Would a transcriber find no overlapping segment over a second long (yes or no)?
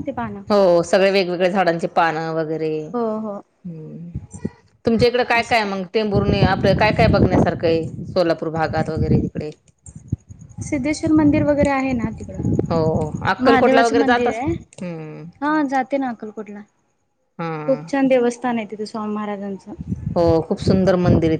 no